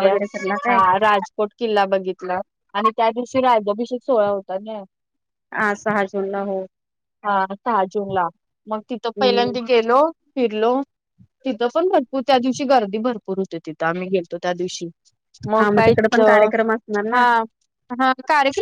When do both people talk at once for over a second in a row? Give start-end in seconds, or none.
none